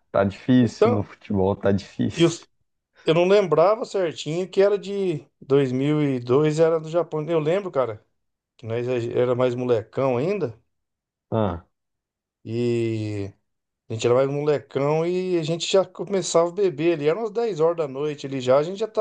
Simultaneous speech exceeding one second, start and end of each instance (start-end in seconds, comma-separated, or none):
none